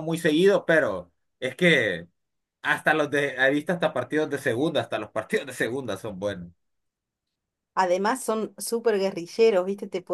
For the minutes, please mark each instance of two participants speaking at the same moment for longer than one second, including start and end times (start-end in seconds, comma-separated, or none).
none